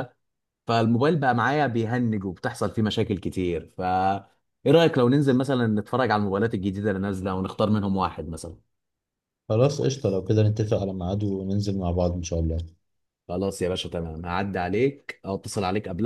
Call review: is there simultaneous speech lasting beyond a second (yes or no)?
no